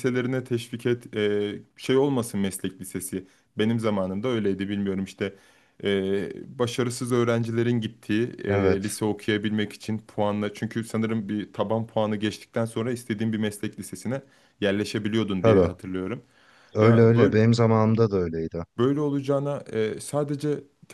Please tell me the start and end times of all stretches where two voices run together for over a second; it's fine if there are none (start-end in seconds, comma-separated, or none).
none